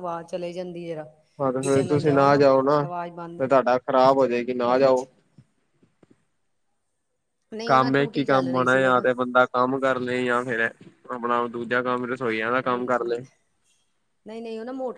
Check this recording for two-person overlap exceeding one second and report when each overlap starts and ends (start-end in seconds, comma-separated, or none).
7.7-9.1